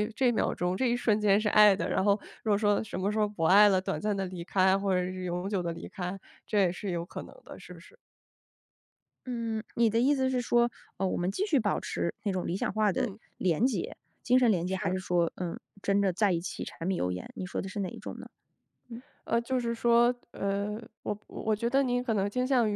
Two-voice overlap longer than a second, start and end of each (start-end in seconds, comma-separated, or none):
none